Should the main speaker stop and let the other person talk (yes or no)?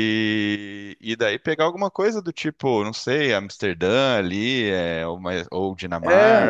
no